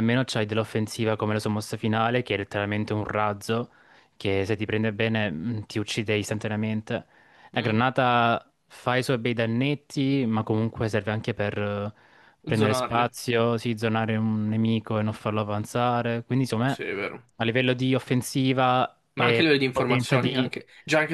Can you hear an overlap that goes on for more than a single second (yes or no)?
yes